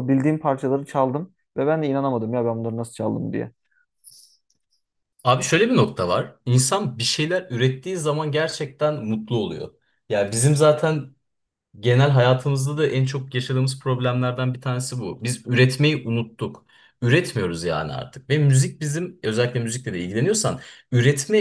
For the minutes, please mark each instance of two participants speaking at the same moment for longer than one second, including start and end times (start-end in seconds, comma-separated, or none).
none